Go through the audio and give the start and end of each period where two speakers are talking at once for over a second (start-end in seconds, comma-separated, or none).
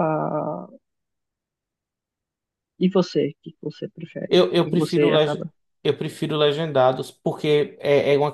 4.3-5.5